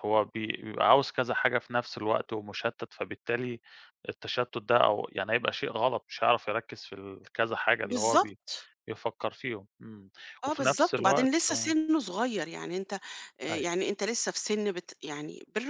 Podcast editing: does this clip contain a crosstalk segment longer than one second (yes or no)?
yes